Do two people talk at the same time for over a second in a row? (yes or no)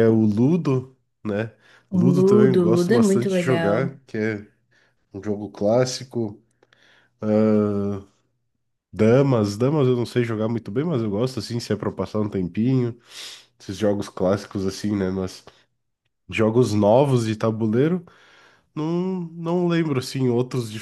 yes